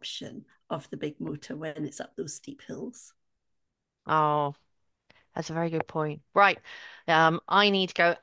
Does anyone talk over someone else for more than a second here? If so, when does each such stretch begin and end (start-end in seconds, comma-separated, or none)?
none